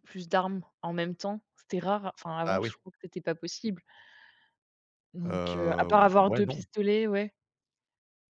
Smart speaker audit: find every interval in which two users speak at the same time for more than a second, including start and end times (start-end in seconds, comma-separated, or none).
5.2-6.7